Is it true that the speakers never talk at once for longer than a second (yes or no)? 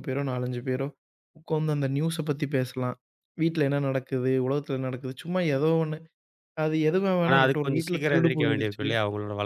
no